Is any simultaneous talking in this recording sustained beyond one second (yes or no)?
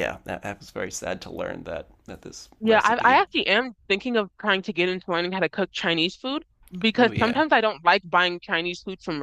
no